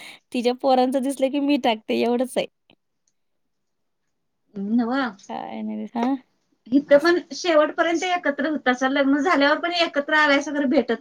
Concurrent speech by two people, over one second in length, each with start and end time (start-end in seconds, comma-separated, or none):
none